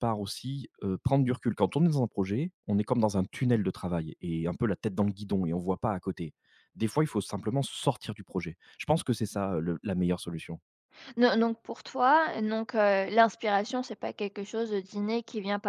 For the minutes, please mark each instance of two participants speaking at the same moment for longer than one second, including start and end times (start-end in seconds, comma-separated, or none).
none